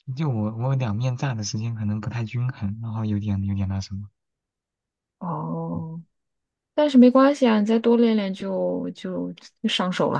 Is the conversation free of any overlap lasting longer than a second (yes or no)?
yes